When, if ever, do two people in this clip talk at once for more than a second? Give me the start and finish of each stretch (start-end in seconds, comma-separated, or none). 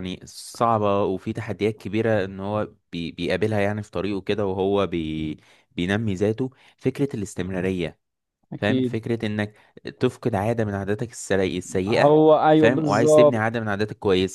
11.9-13.6